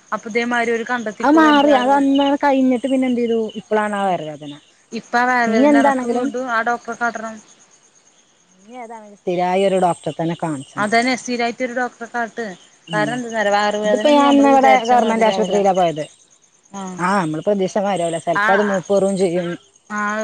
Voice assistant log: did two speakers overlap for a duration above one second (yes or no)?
no